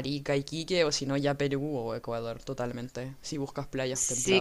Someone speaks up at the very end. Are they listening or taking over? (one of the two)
taking over